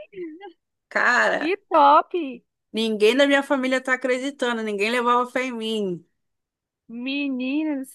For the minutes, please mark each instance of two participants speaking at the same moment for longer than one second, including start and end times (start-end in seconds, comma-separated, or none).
none